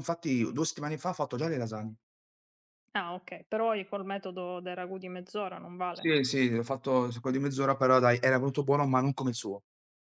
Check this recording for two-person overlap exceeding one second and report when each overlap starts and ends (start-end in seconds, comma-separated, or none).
none